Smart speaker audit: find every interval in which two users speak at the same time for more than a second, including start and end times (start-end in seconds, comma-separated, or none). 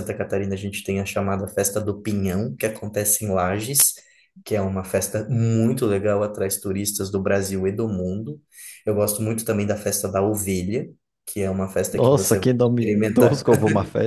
11.9-13.4